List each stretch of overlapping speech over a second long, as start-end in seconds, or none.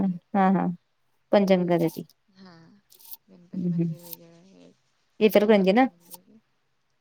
none